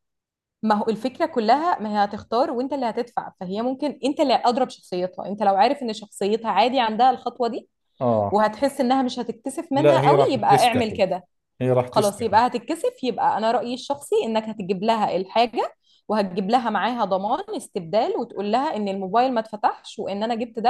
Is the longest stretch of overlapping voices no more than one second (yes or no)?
no